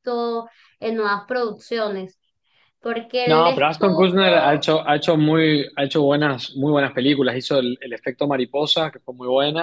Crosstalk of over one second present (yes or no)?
yes